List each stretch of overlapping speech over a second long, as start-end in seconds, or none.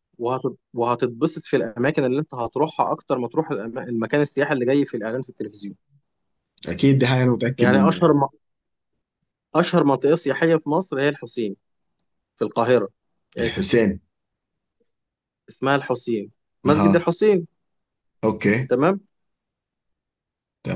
none